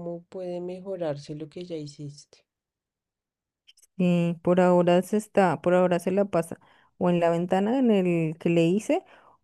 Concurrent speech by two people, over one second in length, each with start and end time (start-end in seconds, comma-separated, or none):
none